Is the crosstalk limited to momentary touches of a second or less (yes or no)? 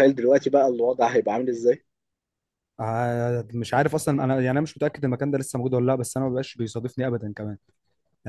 yes